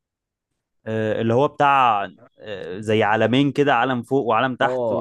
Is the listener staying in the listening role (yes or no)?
no